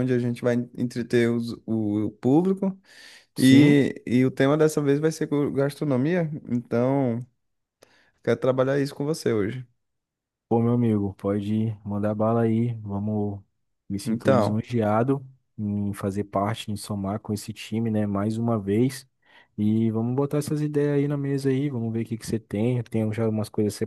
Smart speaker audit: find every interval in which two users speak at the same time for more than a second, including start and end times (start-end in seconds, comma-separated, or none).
none